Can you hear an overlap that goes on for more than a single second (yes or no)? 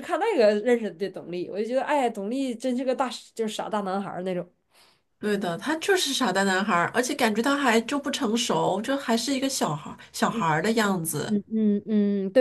no